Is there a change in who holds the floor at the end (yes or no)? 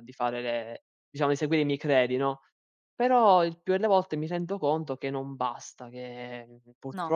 no